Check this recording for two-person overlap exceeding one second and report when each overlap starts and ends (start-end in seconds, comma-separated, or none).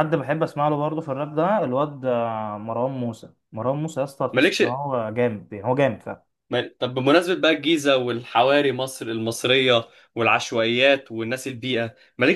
none